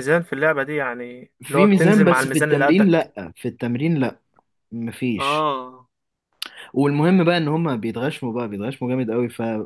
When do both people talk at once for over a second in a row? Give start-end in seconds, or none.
1.4-3.1